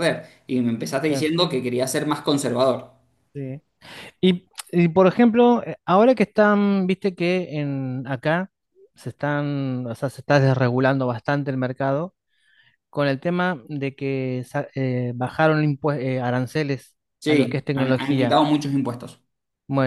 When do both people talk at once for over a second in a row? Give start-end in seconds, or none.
17.2-18.4